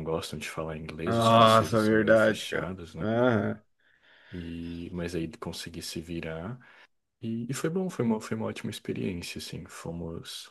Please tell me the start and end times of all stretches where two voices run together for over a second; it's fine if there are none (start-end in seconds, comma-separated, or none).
1.1-3.1